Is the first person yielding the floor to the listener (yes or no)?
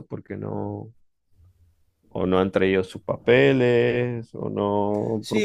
yes